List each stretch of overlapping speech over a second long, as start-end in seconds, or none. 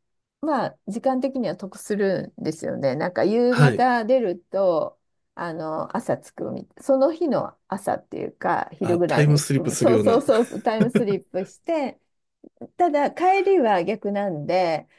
8.8-10.2